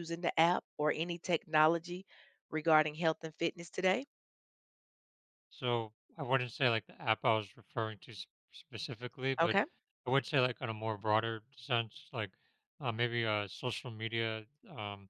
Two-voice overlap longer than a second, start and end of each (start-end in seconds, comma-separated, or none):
none